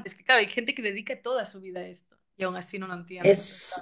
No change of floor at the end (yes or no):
no